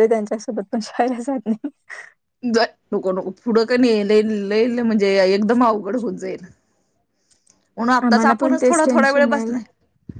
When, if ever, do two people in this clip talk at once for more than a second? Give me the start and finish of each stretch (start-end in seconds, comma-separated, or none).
8.1-9.6